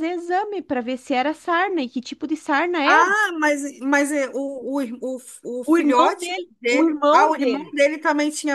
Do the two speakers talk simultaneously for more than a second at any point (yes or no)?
yes